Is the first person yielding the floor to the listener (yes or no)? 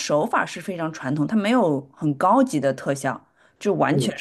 no